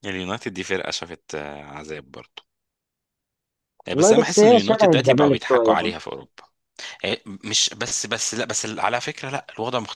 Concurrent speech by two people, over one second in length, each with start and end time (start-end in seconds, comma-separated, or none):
3.9-5.9